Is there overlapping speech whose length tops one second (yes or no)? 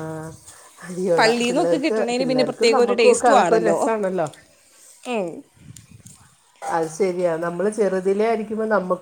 yes